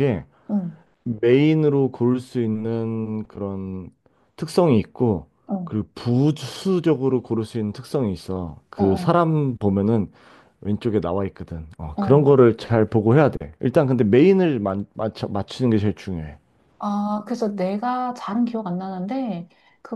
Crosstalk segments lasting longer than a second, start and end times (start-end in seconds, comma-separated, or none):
none